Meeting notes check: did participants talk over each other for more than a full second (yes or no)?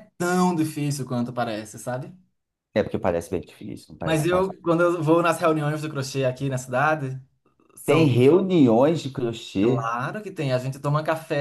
no